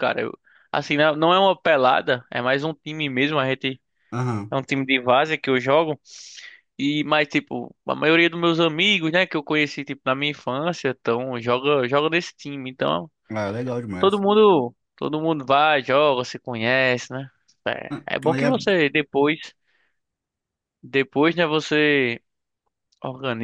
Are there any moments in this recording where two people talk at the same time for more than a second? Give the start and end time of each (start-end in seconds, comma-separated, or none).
none